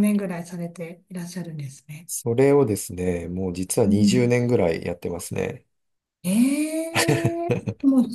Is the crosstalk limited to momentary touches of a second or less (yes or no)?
yes